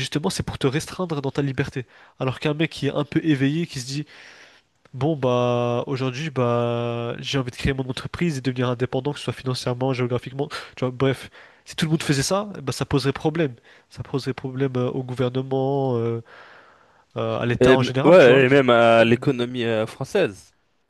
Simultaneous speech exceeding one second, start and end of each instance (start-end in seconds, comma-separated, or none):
17.6-19.1